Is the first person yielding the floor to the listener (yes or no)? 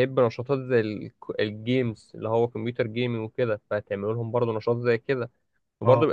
no